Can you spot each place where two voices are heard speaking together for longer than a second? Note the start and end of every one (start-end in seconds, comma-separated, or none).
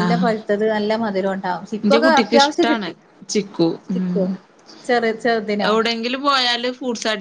none